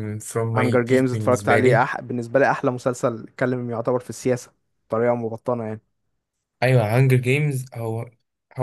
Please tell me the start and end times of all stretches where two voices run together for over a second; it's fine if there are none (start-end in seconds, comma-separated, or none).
0.6-1.8